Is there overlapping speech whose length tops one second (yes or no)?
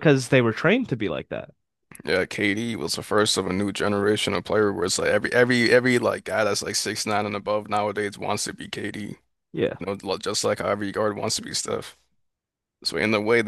no